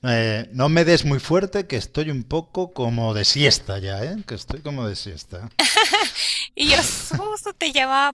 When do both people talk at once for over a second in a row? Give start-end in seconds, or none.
none